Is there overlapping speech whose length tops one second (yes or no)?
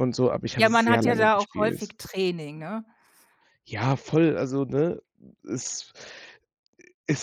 yes